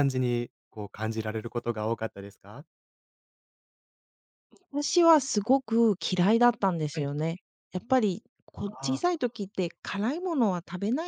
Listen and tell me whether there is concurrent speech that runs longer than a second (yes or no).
no